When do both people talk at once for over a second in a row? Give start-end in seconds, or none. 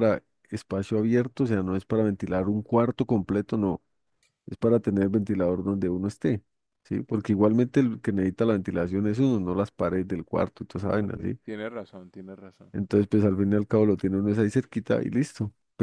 none